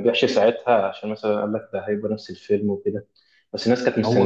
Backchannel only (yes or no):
yes